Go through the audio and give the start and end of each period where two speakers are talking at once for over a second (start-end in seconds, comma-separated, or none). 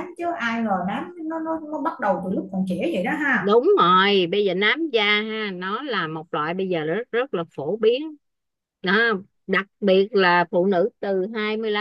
none